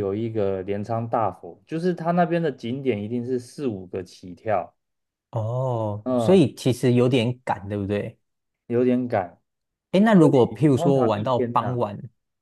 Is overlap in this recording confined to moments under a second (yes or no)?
no